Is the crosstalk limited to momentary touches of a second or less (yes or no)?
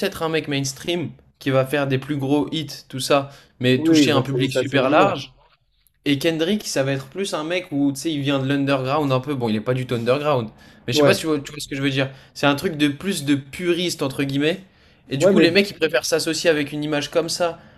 no